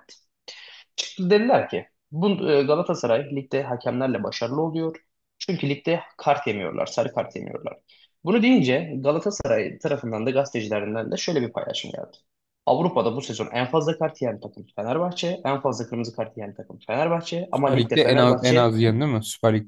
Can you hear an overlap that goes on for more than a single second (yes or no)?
yes